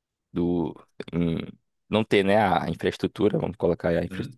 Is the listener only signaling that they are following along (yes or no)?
yes